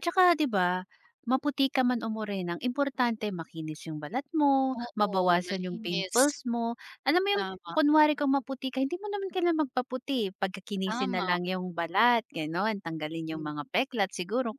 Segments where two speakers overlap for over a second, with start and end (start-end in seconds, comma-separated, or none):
4.8-6.2